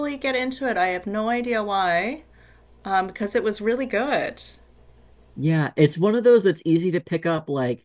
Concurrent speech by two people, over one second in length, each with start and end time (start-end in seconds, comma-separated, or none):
none